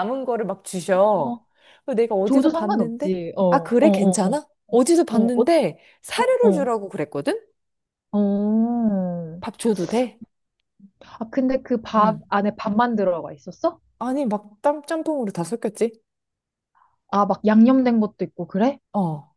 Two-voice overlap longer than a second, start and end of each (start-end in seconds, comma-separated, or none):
2.2-4.3